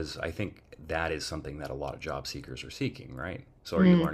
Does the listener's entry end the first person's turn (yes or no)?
no